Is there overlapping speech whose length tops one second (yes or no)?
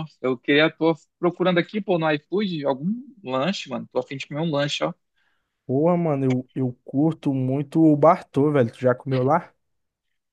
no